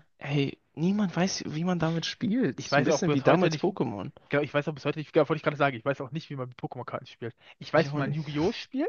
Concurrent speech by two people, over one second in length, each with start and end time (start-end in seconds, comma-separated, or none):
2.6-3.8